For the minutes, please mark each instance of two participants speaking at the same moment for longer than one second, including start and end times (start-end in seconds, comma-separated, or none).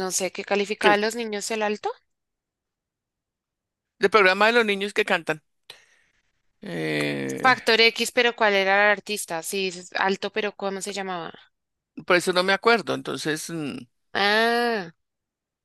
none